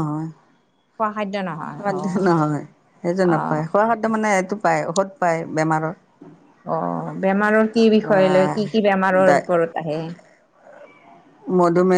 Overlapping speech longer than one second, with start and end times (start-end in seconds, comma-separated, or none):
8.1-9.4